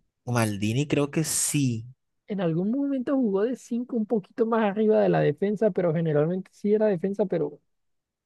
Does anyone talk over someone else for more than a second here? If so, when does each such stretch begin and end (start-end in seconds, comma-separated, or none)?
none